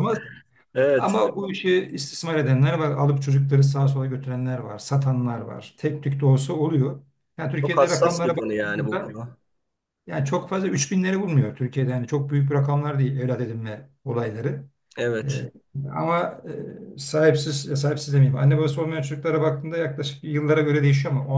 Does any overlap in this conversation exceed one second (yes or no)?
yes